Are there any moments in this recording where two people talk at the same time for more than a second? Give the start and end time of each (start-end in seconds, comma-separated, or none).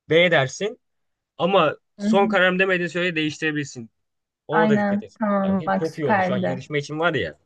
4.5-6.7